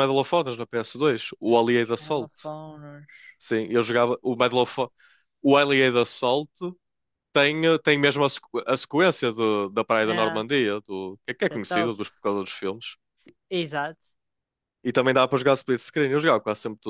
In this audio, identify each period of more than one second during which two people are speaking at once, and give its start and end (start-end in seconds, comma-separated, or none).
none